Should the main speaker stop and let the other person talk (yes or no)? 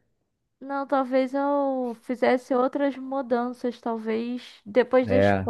no